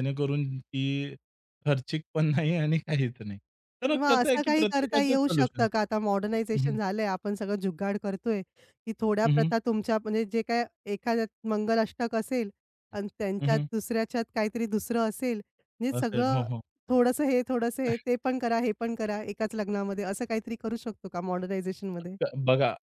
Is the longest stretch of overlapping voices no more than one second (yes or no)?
no